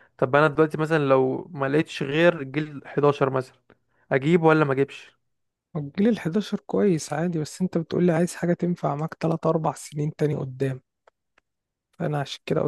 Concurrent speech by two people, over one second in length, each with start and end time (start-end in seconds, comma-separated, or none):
none